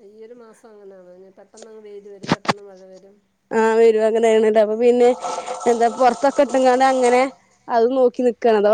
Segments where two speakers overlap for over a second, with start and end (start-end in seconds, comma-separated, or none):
none